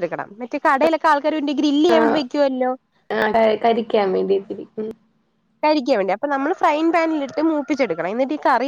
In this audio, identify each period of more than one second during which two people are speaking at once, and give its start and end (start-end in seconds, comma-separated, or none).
none